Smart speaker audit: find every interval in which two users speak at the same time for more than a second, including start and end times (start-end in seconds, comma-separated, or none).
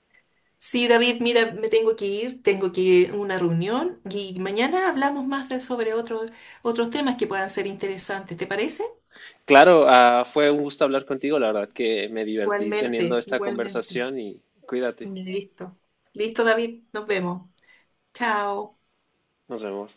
12.4-14.1